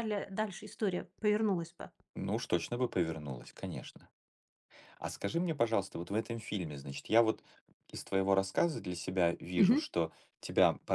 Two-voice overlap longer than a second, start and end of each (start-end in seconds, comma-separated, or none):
none